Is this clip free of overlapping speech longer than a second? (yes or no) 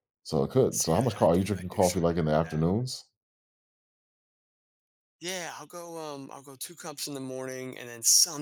no